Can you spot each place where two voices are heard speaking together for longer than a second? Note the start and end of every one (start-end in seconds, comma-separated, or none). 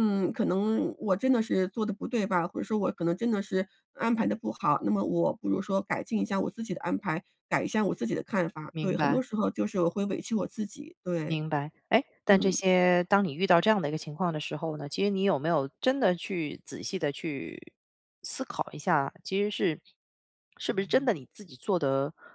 none